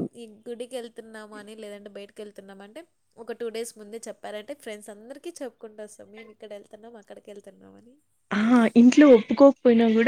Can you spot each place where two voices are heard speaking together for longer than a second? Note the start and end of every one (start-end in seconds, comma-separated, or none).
none